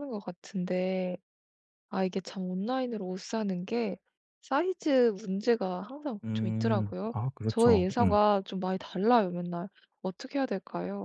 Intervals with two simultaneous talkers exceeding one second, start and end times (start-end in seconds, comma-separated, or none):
6.2-8.2